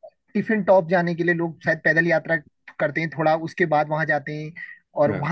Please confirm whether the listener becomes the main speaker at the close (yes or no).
no